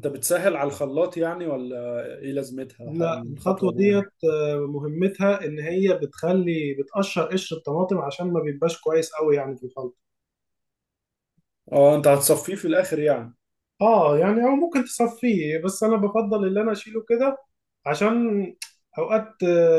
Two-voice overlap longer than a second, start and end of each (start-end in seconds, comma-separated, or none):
2.8-4.1